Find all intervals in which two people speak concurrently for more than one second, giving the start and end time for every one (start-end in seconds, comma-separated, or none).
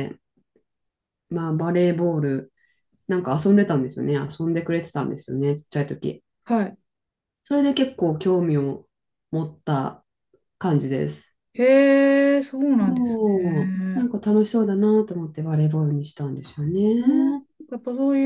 12.8-14.1